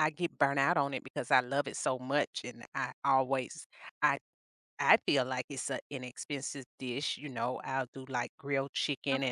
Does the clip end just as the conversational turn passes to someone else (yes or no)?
no